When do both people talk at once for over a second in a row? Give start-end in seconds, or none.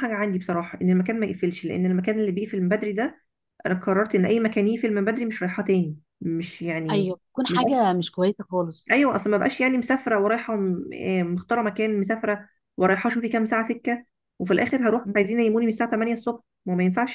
none